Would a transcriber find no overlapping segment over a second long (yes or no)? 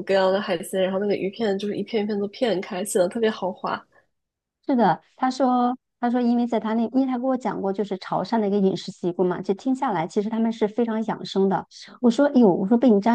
yes